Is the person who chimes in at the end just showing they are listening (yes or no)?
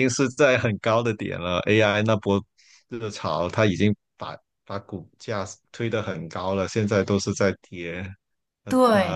no